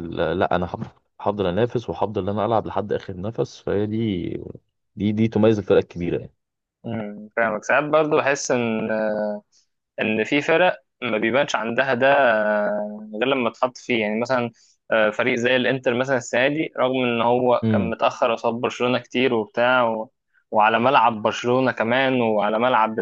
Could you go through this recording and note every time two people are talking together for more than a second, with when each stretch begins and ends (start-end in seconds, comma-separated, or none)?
none